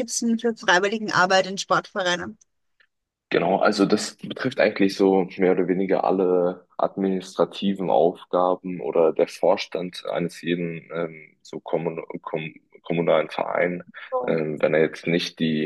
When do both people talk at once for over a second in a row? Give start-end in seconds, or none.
none